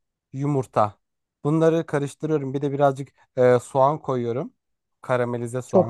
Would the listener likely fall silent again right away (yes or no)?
yes